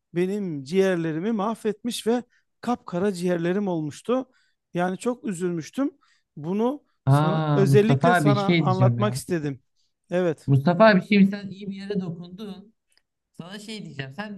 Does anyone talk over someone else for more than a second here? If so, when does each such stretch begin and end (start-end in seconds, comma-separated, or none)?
7.1-9.2